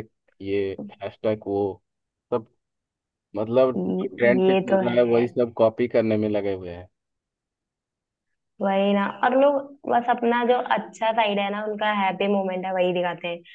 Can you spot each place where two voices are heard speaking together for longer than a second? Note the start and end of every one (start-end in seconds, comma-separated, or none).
3.8-5.3